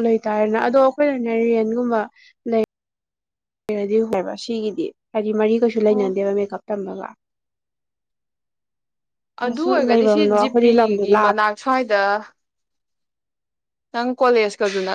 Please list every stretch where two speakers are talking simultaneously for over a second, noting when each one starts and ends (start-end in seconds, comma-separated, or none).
9.6-11.4